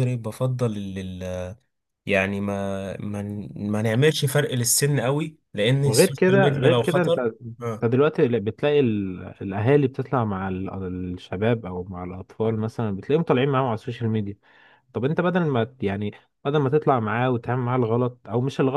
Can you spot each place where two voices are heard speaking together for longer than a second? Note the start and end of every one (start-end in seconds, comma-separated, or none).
5.8-7.2